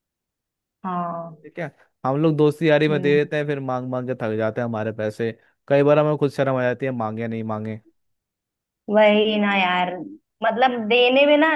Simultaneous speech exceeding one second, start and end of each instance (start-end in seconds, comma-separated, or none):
none